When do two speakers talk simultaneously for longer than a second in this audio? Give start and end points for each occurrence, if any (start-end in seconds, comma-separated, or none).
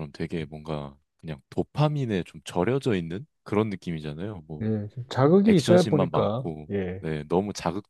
5.5-7.0